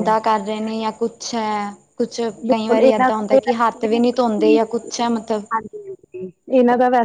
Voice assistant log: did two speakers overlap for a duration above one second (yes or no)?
yes